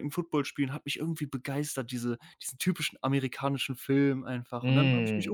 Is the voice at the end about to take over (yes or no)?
yes